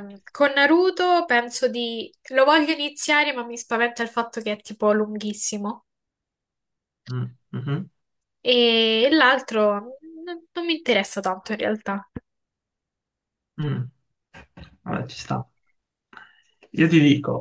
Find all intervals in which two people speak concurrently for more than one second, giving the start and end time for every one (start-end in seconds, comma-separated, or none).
none